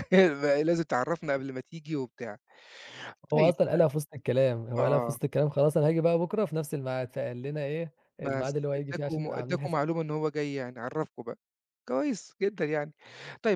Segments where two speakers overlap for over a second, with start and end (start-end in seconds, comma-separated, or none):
8.2-9.9